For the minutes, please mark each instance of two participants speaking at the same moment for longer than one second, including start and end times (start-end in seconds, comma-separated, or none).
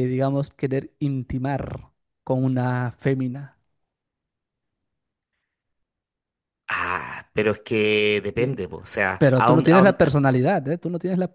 9.2-10.4